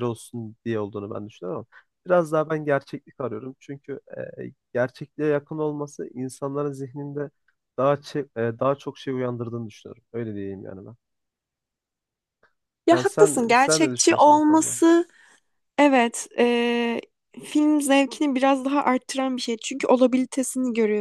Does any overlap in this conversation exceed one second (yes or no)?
yes